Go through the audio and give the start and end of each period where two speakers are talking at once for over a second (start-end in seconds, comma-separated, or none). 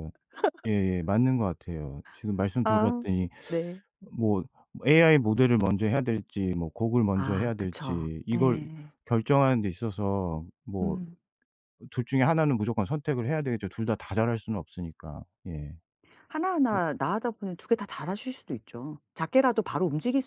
7.2-8.6